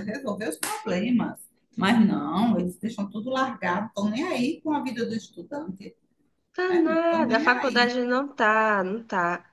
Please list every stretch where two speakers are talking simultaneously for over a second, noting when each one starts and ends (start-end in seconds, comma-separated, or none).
6.7-8.0